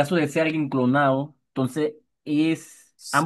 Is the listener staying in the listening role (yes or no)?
no